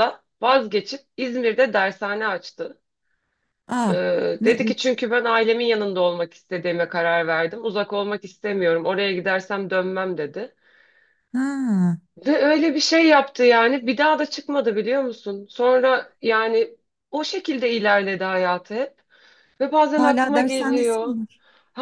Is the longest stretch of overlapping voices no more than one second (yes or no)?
no